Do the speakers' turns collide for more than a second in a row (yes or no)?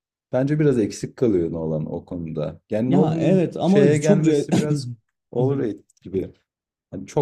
yes